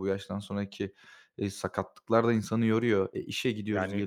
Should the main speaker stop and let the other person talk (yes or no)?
yes